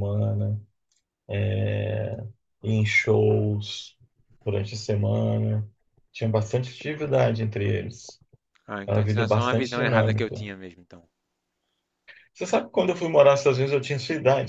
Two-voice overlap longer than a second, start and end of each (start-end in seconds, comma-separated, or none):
8.9-10.5